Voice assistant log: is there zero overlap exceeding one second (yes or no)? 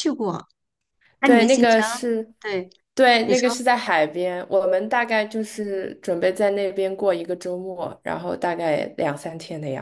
yes